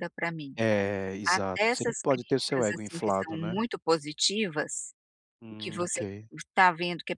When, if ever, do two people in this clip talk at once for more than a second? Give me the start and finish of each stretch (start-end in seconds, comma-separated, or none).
1.2-3.6